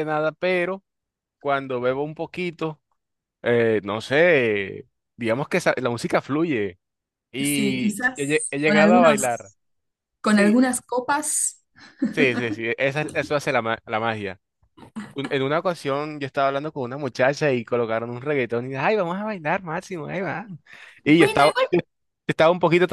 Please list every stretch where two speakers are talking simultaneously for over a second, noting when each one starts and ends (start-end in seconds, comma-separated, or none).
7.4-9.5